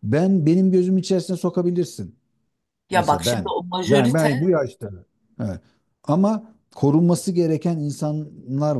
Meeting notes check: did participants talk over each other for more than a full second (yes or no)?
yes